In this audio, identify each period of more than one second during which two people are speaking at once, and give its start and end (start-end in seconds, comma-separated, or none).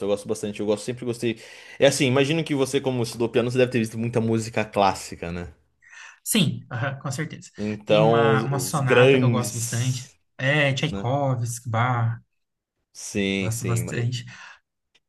7.6-10.2